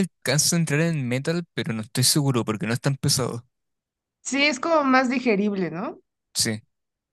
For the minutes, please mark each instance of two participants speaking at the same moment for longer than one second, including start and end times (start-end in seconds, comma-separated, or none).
none